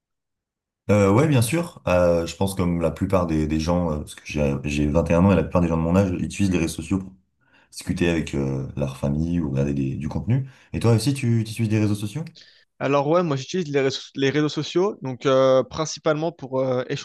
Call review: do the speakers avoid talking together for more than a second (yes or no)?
yes